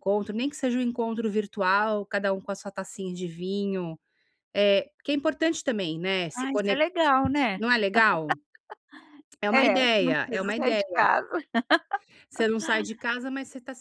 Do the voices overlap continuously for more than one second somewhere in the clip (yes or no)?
yes